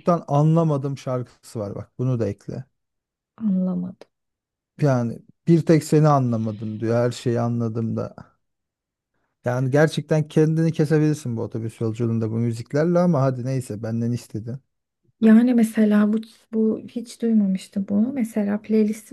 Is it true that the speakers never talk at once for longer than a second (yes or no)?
yes